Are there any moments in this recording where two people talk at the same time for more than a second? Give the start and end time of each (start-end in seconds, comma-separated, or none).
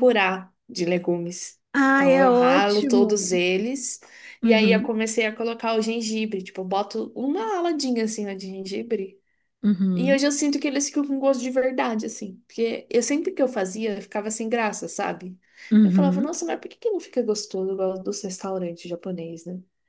1.7-3.4